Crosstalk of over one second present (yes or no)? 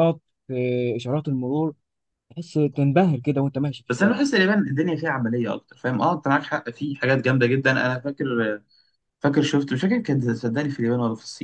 no